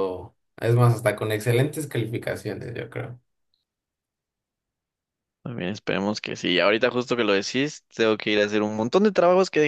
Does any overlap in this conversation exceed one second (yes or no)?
no